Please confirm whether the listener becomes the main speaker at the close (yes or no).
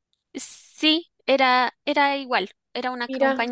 no